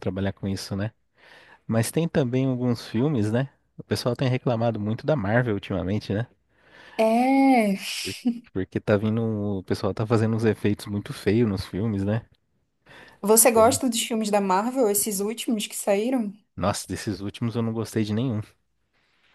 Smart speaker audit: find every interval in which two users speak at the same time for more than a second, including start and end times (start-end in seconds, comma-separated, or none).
none